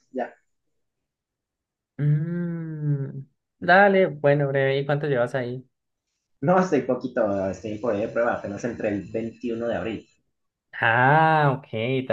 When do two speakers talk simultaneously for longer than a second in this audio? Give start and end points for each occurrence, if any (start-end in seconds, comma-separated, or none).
none